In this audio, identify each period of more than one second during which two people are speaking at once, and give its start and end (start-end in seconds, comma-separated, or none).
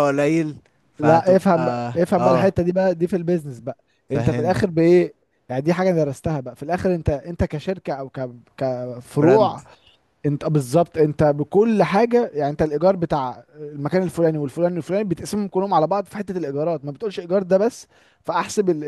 1.0-2.5